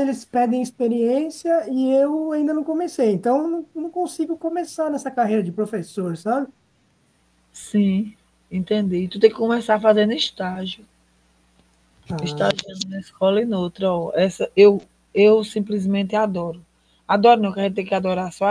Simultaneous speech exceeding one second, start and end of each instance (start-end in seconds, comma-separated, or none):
none